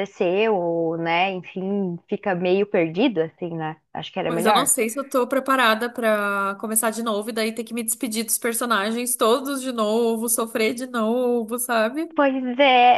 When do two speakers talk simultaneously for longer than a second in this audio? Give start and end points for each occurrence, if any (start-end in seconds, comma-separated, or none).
none